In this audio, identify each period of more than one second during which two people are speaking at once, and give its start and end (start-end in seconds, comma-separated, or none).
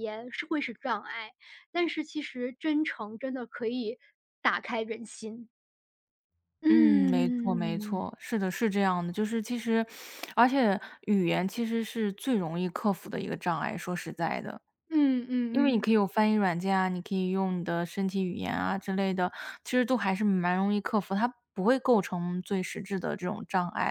6.7-8.0